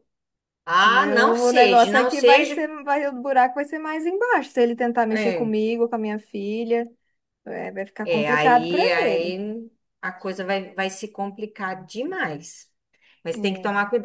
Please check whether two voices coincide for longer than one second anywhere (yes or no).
yes